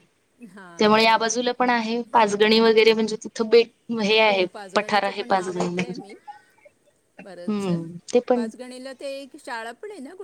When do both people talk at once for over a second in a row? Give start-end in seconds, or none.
none